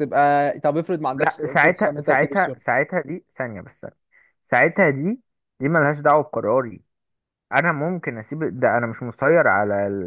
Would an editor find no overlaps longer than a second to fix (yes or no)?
no